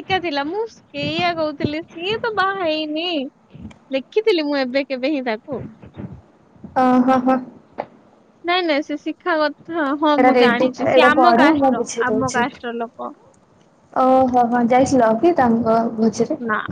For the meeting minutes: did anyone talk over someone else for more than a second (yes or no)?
yes